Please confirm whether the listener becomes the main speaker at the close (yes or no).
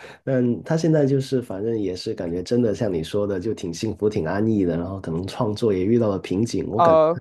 yes